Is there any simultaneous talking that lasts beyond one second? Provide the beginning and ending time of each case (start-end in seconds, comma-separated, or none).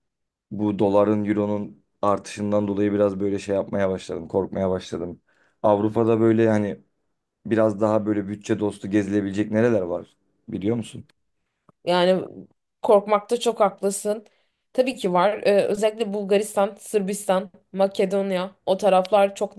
none